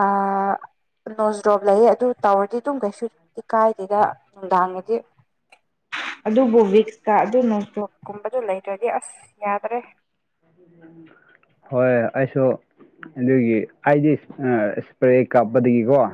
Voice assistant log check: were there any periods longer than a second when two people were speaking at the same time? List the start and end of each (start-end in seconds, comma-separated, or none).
none